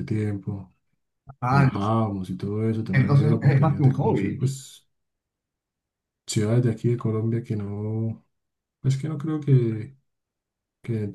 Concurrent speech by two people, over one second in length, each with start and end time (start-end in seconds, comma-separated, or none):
2.9-4.6